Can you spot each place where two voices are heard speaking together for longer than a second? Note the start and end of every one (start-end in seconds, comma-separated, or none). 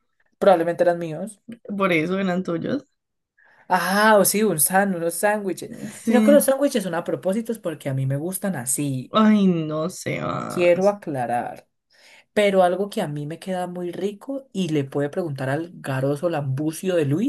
none